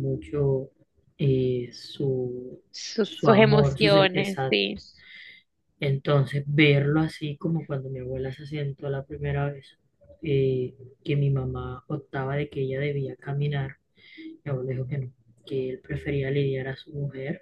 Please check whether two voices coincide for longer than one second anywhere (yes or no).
yes